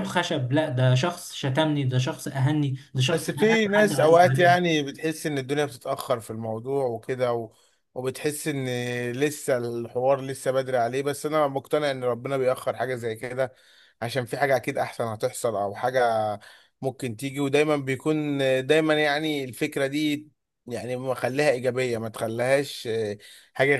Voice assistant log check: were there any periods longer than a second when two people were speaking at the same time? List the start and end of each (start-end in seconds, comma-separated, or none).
3.1-4.7